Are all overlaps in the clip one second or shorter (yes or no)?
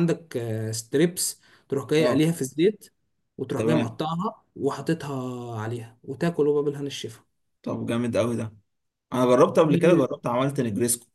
yes